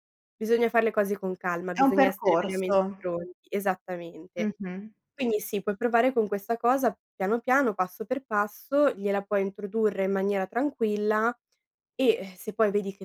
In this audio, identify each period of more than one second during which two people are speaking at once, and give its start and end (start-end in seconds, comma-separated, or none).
1.8-3.1